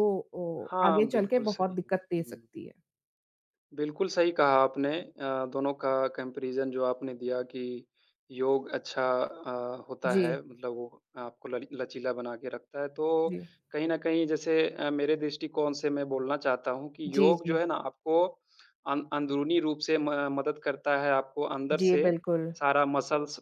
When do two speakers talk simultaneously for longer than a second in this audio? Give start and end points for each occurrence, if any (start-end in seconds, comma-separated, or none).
0.7-2.4